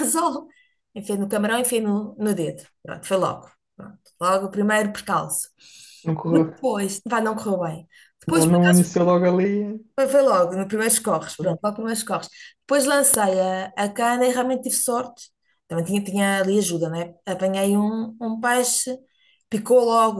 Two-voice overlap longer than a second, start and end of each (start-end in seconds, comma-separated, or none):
none